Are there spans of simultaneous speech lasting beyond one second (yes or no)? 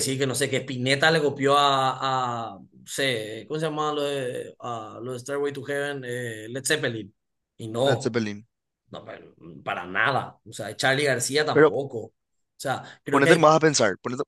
no